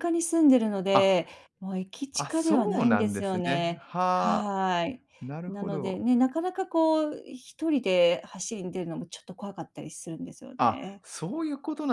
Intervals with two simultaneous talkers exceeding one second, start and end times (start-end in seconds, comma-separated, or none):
2.1-4.6